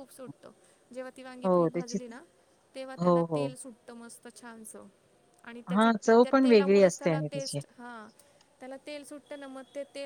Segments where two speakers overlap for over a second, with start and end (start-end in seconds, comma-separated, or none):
5.7-7.6